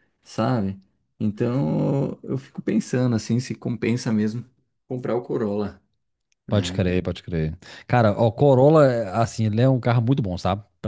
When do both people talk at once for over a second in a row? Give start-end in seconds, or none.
none